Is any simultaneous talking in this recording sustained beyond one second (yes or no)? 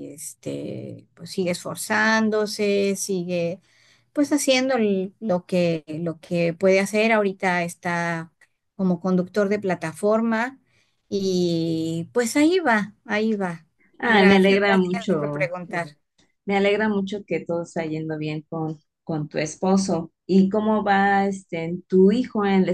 yes